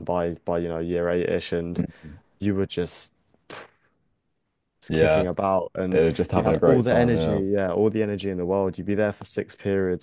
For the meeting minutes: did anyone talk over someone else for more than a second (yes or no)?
yes